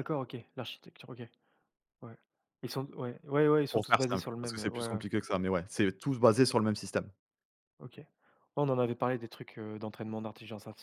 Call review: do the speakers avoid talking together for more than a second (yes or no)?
no